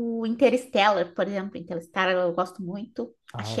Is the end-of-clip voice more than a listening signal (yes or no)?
no